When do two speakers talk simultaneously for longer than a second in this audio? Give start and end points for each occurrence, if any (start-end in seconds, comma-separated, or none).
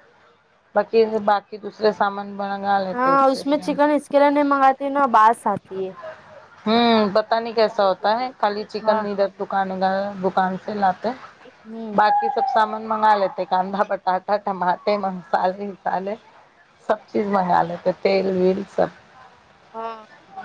7.7-9.0